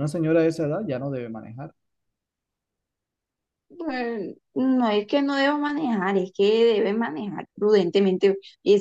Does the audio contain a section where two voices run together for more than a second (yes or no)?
no